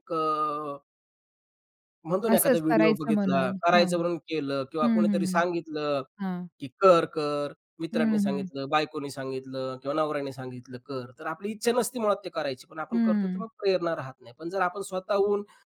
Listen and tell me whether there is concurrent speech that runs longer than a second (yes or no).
yes